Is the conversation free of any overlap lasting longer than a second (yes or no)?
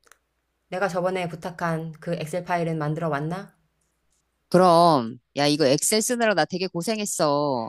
yes